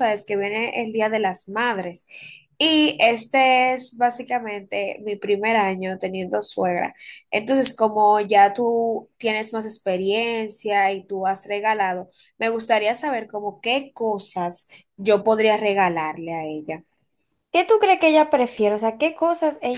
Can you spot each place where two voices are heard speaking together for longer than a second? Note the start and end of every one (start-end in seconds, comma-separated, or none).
none